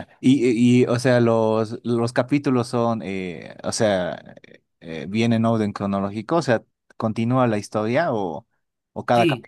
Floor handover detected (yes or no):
yes